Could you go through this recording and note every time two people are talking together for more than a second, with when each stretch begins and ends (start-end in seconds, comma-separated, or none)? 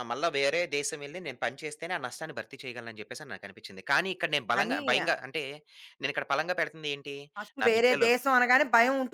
none